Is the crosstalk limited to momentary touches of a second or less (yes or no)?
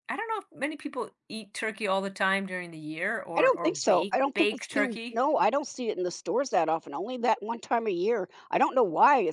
no